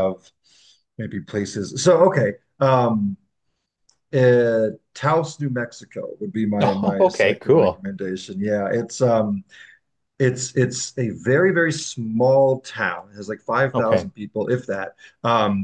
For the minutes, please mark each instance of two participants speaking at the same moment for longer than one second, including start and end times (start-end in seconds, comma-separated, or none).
6.6-7.8